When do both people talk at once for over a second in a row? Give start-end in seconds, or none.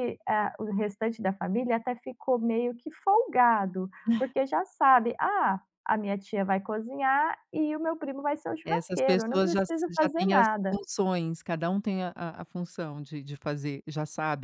8.6-10.8